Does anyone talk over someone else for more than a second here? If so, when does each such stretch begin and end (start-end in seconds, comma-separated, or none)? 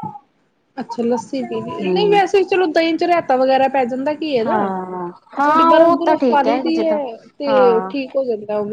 5.3-7.0